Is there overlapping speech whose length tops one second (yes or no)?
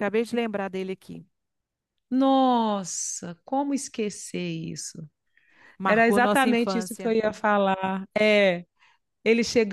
yes